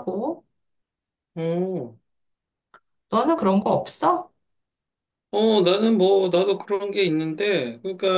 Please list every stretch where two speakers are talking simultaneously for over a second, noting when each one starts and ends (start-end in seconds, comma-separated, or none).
none